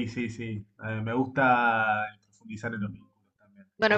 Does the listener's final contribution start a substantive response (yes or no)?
yes